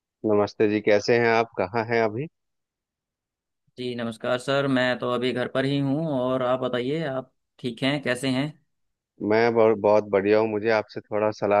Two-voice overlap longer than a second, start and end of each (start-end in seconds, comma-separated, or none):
none